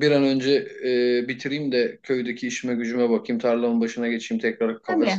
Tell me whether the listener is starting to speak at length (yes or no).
no